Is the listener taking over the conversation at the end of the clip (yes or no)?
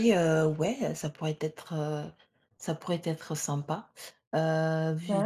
no